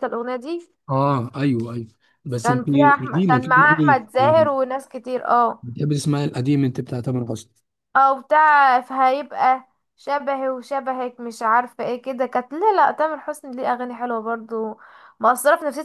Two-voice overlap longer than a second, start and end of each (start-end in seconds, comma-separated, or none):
2.4-4.0